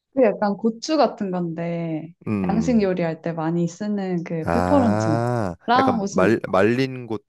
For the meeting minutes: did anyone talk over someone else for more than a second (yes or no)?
yes